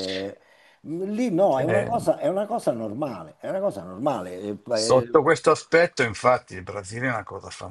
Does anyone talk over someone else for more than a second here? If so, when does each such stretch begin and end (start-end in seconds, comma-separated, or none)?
none